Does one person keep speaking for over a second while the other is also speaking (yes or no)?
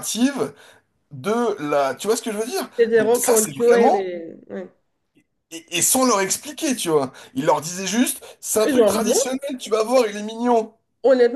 yes